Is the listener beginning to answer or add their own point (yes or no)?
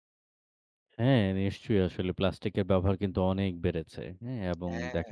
no